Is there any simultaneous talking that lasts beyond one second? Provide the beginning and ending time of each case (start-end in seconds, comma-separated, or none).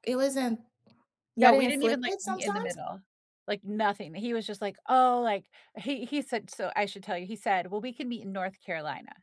1.4-2.8